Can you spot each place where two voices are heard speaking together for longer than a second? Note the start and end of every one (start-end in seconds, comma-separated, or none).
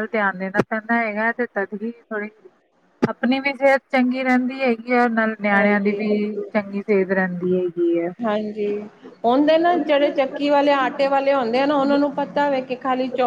none